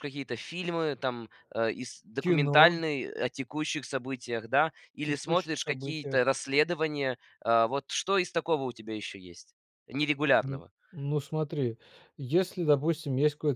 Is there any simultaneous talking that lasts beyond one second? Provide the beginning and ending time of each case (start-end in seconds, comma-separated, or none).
5.0-6.3